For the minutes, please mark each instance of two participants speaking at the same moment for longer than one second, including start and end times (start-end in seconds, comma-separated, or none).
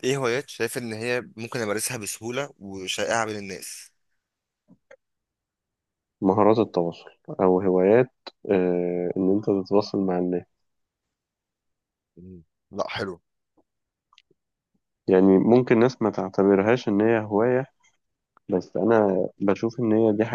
none